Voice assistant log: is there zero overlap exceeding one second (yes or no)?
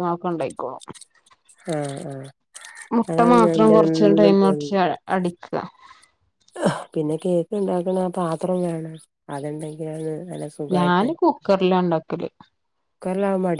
no